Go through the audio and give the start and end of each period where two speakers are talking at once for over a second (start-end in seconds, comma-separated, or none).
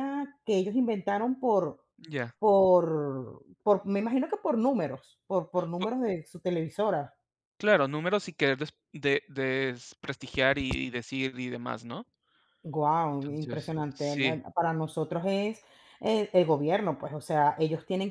13.1-14.4